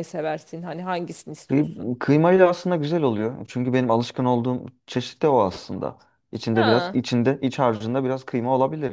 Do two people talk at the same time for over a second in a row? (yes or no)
no